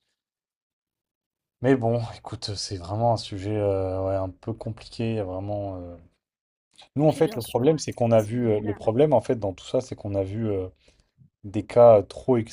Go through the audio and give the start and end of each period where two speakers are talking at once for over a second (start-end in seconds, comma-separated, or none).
7.0-8.9